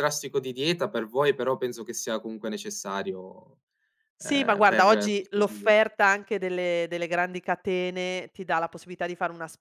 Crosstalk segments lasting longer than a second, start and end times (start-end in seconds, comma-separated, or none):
4.2-5.7